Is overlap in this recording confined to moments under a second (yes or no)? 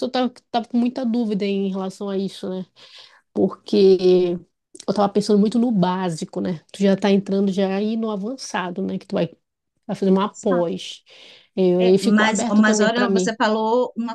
no